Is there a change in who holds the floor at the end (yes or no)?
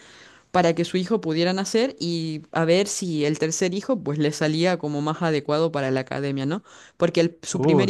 no